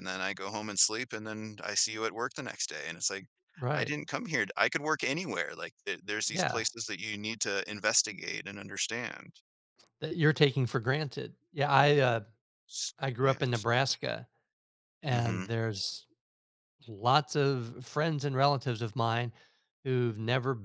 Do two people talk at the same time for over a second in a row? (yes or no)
no